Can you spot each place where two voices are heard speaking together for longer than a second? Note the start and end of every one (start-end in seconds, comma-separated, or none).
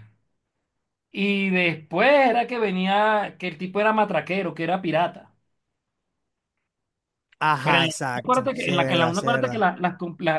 7.6-9.7